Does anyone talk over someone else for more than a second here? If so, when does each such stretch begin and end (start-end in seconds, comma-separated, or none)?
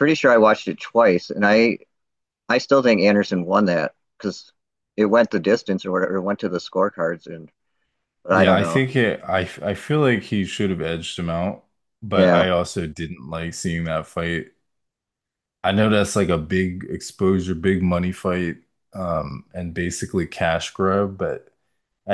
none